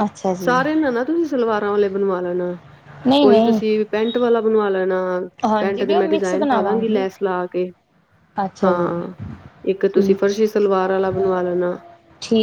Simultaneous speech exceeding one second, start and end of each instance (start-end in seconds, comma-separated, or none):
5.6-7.1